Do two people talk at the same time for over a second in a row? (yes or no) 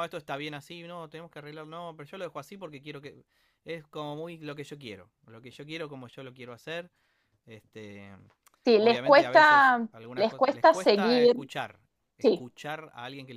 yes